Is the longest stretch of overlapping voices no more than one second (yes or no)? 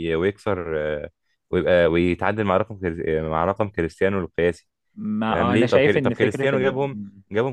no